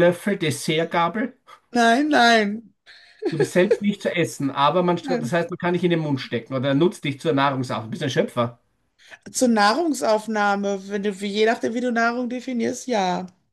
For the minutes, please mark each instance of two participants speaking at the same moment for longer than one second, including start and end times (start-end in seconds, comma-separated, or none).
none